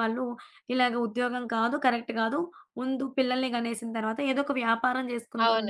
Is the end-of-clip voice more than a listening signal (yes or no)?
yes